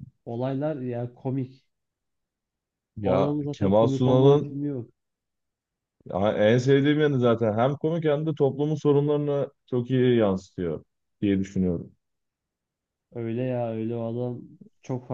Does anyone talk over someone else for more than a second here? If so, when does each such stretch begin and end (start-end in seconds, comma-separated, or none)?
3.0-4.6